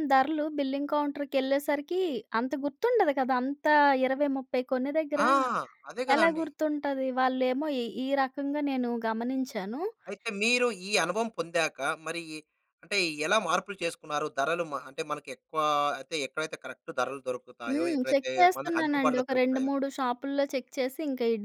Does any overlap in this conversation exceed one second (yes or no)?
yes